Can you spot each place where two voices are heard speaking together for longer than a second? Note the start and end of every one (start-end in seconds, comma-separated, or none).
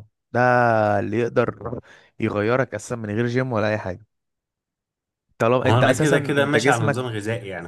5.6-7.2